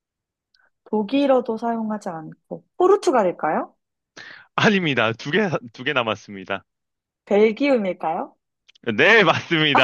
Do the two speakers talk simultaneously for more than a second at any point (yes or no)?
no